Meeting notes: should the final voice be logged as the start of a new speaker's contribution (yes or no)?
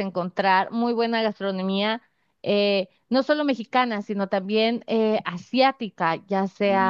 no